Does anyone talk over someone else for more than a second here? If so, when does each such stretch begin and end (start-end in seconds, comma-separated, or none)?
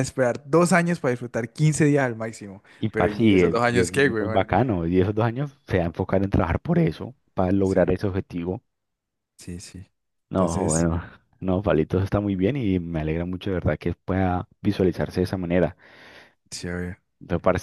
2.8-4.5